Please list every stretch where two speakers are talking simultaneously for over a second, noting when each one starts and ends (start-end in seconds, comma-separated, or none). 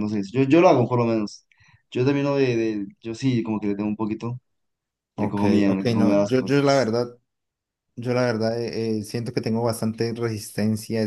5.2-6.9